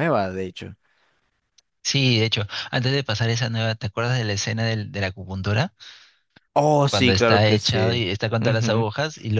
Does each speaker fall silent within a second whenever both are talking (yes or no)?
no